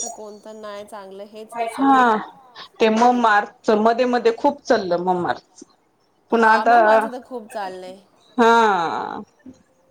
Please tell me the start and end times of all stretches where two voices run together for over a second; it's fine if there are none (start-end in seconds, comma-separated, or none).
6.3-8.2